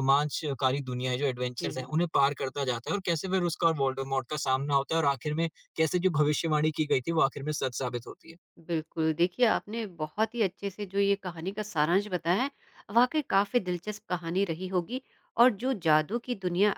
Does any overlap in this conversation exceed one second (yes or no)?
no